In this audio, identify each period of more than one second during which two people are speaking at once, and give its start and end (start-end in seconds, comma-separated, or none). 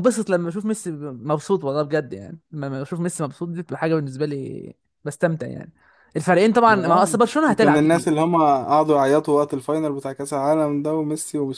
6.7-8.2